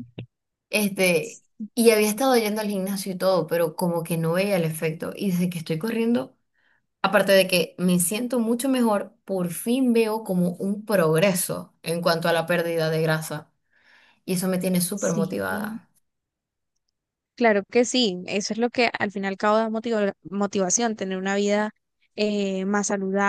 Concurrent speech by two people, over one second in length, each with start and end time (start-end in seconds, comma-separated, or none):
none